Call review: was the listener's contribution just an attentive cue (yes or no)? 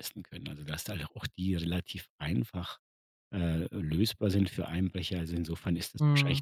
yes